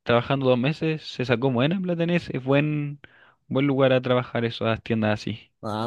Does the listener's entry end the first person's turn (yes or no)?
yes